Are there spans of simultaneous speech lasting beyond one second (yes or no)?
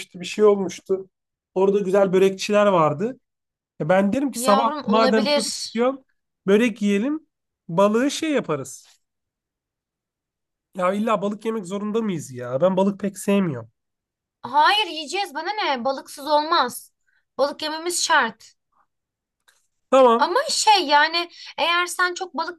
yes